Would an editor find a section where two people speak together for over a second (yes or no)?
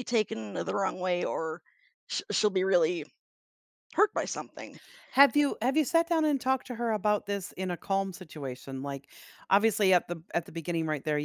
no